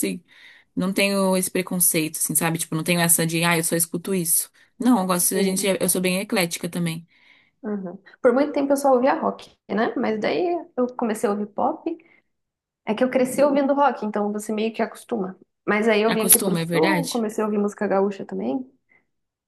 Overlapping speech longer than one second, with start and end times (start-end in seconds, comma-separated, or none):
16.1-17.3